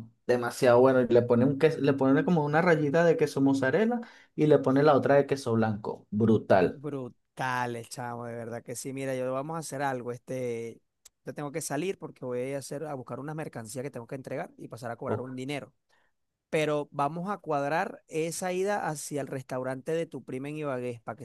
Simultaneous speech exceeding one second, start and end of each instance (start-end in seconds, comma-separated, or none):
none